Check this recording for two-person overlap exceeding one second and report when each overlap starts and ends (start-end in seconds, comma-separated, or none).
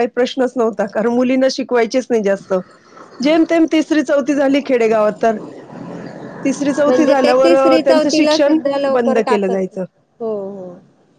6.8-9.8